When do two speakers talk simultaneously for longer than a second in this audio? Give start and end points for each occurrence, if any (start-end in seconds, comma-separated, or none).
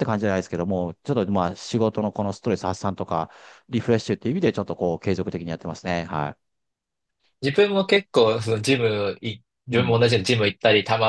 none